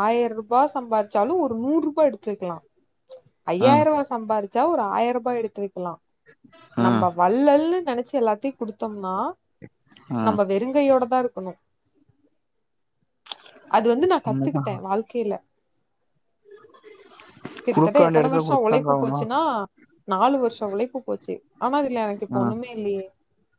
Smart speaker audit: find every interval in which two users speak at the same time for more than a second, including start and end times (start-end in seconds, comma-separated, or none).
17.7-19.2